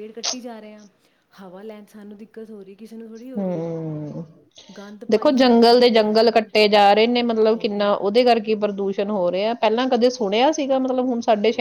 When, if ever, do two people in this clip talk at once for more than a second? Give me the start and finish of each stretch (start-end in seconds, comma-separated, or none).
5.1-6.5